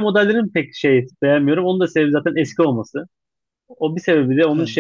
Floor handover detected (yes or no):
no